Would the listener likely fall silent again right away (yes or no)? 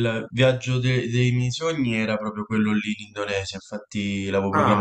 yes